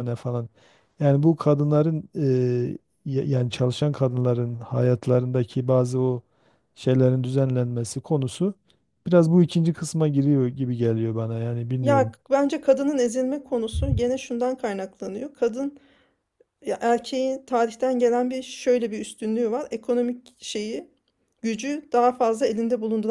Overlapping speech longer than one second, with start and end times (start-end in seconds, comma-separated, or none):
none